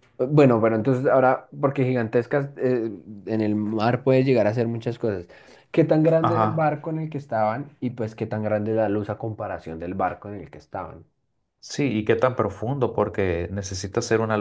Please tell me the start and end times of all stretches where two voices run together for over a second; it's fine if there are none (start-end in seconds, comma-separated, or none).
none